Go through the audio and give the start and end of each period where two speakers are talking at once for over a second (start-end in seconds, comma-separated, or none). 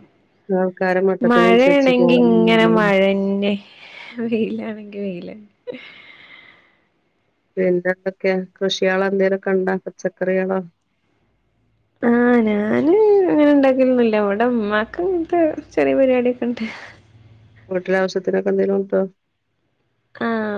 1.3-2.8